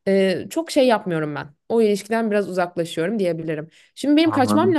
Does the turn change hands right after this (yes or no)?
no